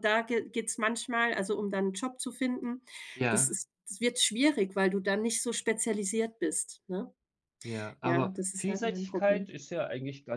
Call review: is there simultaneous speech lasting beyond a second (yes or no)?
yes